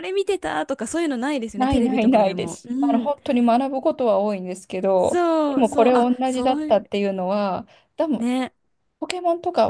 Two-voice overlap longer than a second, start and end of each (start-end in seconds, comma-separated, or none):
1.6-3.1, 5.0-6.8